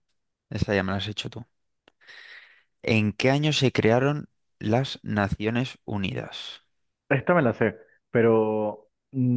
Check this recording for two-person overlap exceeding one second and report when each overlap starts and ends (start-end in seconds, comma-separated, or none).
none